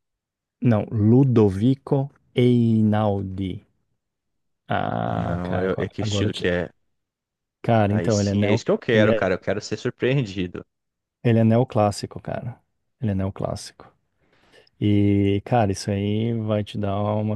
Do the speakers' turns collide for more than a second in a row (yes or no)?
yes